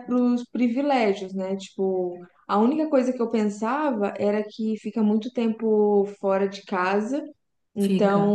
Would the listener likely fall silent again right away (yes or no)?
yes